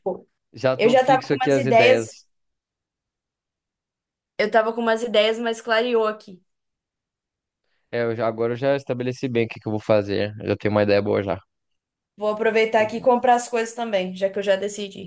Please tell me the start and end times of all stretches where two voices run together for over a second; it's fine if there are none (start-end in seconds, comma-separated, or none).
0.8-2.1